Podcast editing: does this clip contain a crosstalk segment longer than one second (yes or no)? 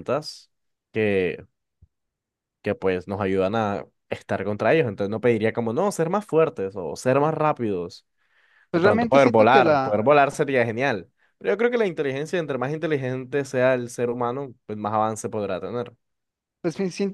yes